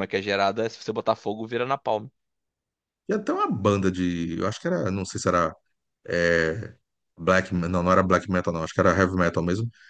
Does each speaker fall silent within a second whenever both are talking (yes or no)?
yes